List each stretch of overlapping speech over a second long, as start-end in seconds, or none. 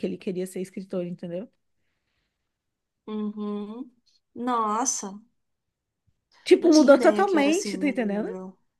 6.6-8.3